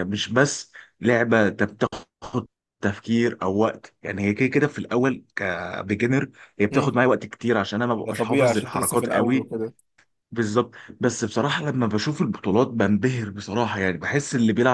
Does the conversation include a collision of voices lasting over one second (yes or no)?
yes